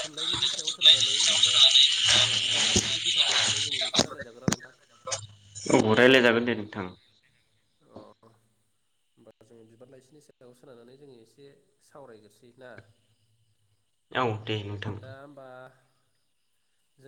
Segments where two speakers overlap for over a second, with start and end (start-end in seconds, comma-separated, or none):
none